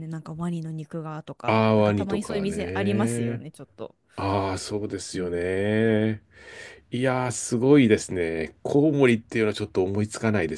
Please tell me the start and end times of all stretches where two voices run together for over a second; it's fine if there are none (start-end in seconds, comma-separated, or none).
1.4-3.4